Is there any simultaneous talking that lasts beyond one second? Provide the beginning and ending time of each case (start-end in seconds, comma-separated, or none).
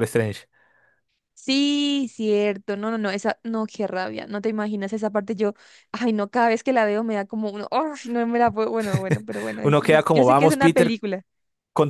9.6-11.0